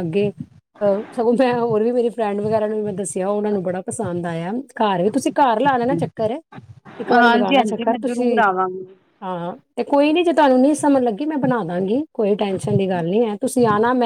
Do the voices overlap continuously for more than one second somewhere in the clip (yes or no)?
yes